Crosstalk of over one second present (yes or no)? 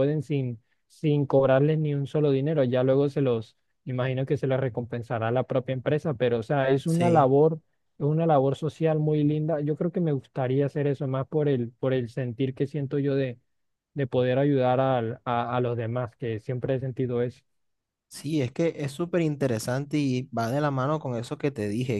no